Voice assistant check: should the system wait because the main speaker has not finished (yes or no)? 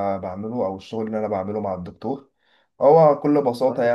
yes